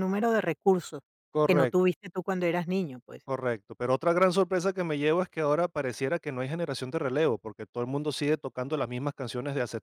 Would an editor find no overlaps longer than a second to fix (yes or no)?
yes